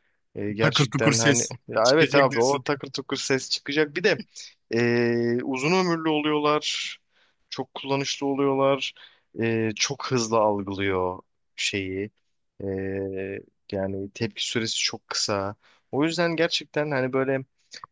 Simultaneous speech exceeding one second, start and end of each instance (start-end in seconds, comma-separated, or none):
0.6-2.6